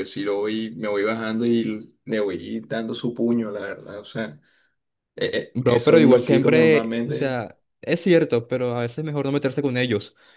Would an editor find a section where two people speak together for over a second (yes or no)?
yes